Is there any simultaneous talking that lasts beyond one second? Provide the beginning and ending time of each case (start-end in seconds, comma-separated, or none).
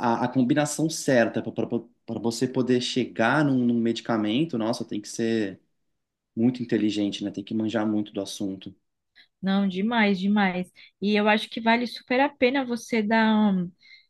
none